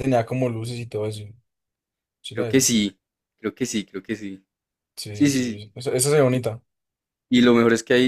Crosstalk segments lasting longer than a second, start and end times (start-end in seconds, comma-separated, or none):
none